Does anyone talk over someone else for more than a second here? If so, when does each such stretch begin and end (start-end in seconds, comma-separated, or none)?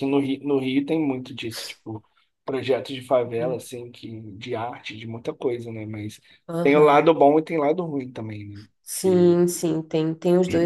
none